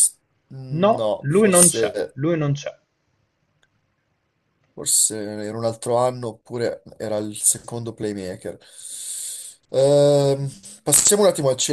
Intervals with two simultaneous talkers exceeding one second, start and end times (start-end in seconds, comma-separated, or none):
0.7-2.2